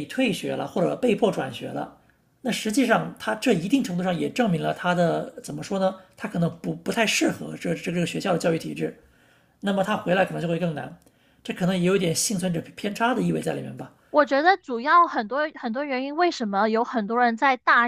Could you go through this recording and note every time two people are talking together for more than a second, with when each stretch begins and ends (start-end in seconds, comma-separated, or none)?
none